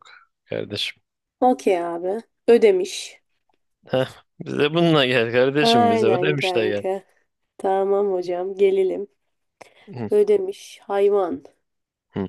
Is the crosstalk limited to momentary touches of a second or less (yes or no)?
no